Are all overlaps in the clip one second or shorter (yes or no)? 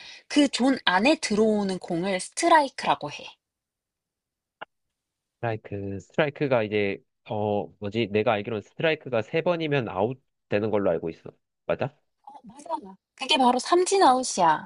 yes